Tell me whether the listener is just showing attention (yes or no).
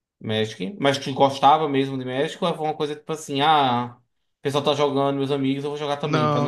no